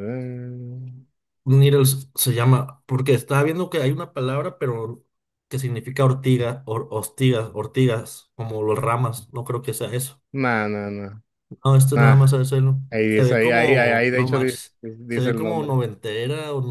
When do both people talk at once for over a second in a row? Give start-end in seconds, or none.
12.9-15.7